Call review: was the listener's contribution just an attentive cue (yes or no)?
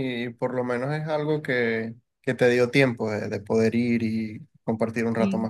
no